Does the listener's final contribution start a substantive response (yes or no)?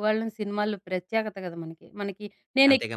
no